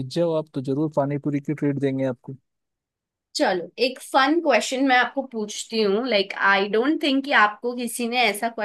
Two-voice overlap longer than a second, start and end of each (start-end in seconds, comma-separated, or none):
none